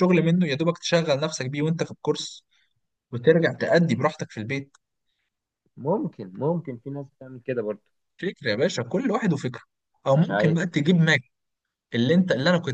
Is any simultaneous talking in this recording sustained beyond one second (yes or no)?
no